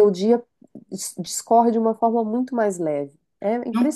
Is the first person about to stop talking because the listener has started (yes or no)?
yes